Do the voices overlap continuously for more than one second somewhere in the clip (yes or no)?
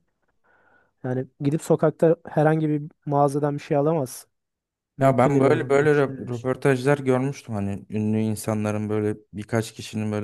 yes